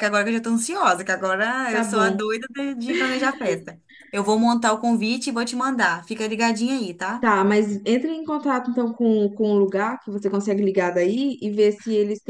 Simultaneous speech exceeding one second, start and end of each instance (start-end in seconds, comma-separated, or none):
none